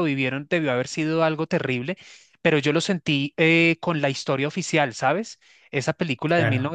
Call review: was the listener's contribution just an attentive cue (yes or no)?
yes